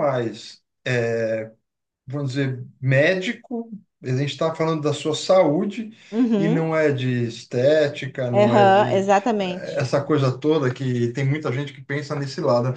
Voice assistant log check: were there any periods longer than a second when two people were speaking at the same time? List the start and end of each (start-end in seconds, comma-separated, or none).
8.3-9.8